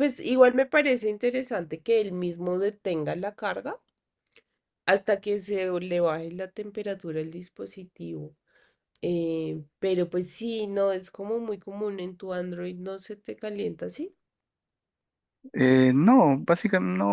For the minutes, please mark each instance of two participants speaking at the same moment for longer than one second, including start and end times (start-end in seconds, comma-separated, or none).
none